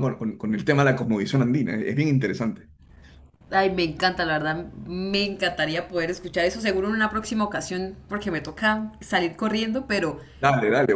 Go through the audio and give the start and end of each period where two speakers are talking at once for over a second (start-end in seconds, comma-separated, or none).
none